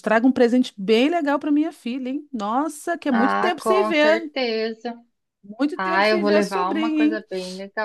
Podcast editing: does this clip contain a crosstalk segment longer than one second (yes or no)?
yes